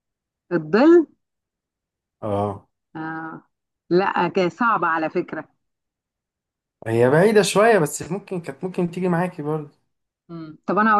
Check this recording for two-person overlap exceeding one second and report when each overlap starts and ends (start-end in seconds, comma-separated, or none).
none